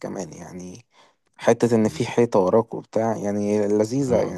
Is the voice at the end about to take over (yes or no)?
yes